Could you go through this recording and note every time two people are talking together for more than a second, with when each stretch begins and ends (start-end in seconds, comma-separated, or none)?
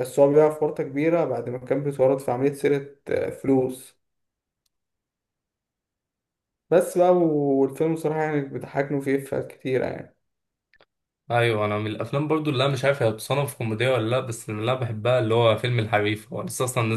none